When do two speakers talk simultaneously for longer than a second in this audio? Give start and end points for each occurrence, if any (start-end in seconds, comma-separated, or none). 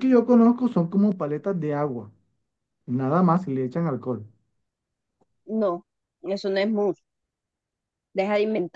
none